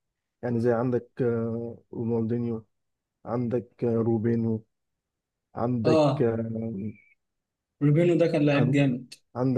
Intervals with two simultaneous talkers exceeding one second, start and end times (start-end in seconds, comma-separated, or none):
none